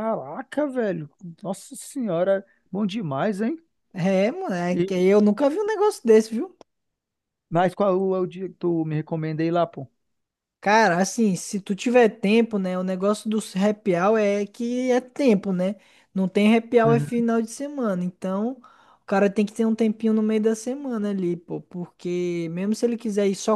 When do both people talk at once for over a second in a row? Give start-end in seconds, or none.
none